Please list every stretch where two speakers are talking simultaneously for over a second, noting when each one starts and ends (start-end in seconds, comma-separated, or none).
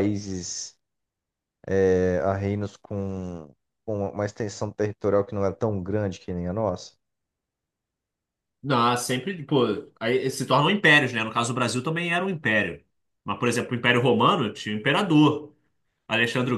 none